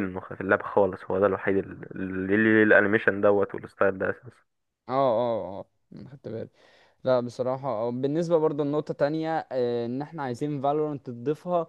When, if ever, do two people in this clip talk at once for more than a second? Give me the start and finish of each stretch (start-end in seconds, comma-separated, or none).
none